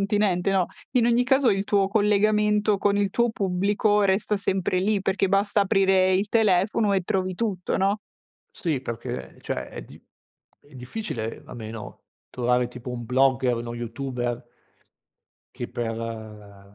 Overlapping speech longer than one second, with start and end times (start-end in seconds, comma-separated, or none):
none